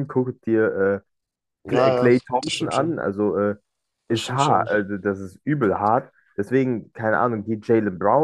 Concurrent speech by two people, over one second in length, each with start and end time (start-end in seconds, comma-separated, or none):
1.7-3.0